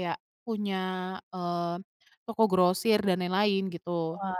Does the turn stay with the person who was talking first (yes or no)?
no